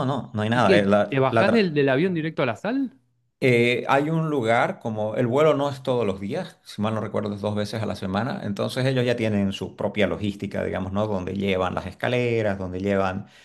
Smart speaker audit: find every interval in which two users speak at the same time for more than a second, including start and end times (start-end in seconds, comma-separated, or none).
0.5-1.7